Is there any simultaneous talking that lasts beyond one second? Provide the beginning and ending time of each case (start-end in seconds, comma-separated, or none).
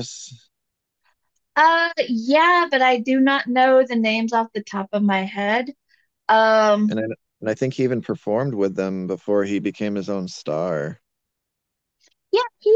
none